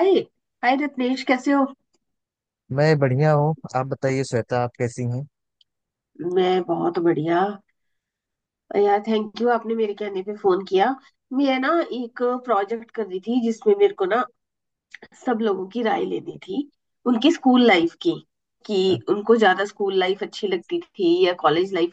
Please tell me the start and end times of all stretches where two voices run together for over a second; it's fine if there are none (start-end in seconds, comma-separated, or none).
none